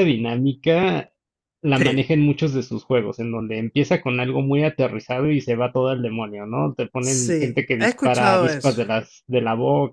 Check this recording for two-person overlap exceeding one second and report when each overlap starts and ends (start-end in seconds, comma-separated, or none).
7.0-8.8